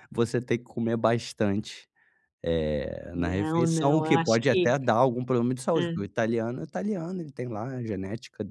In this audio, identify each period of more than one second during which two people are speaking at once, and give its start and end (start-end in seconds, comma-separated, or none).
3.1-4.7